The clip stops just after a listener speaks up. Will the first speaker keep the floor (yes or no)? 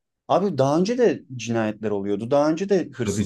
yes